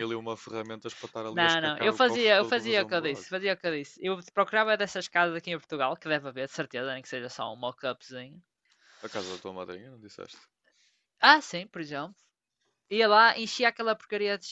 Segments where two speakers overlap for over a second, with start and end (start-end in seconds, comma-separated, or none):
1.3-3.3